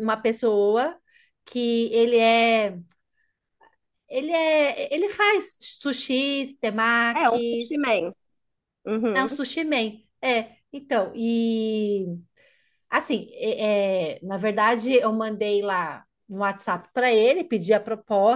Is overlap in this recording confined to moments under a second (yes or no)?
yes